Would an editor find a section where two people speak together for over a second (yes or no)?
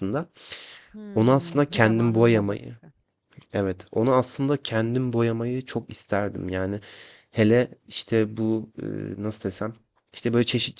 yes